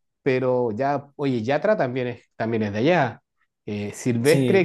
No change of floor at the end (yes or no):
yes